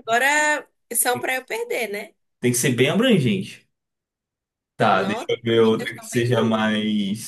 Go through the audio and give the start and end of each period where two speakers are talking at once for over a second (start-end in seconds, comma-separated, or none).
4.9-6.7